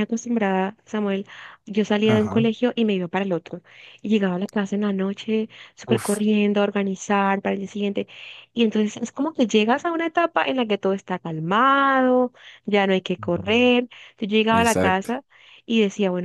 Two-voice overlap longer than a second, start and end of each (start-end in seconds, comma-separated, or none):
none